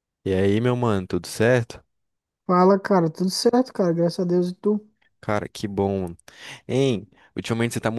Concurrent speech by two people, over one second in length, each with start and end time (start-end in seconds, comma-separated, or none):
none